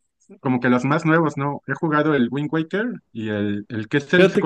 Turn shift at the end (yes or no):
no